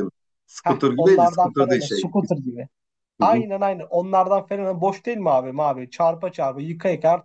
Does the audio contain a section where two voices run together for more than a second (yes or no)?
yes